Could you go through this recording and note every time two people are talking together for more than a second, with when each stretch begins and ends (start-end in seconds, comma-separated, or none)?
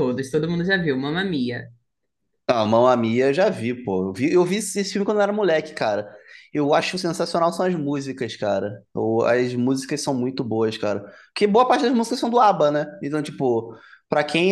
none